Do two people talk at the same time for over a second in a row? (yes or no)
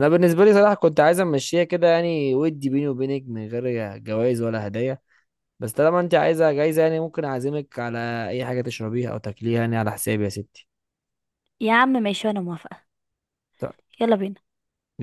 no